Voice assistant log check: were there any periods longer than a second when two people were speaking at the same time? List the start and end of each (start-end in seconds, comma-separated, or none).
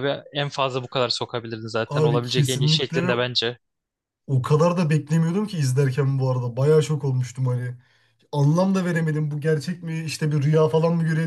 1.9-3.1